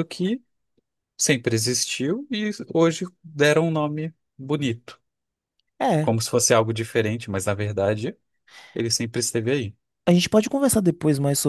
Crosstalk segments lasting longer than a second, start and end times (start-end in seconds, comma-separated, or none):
none